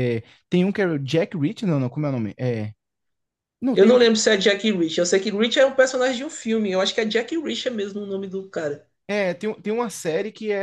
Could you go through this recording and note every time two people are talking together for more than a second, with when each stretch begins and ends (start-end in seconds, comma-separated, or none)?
none